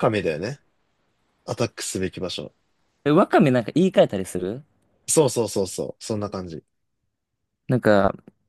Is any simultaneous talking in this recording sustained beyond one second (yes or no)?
no